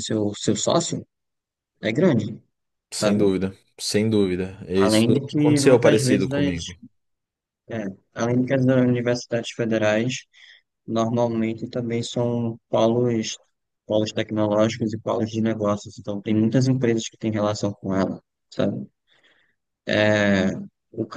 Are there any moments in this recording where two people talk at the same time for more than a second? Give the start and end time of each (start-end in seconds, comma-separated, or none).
4.8-6.6